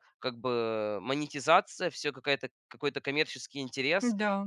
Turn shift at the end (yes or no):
no